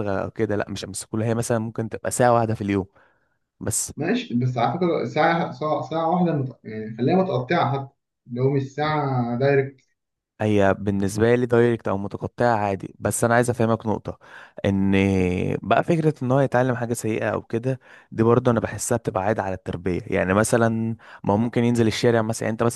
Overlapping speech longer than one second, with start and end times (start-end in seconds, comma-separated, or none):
none